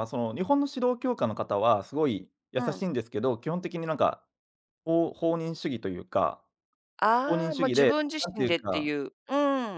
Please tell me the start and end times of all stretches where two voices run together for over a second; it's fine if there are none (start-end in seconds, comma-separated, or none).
7.2-8.9